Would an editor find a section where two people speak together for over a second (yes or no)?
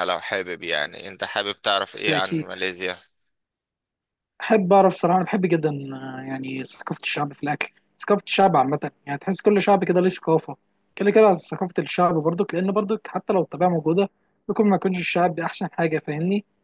no